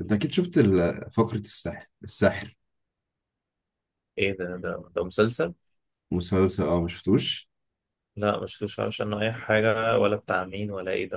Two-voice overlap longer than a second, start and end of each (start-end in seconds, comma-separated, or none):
none